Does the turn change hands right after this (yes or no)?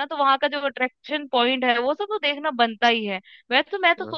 no